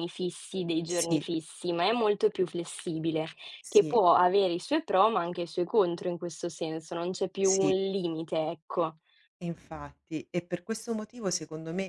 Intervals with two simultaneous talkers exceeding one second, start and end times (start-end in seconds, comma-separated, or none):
none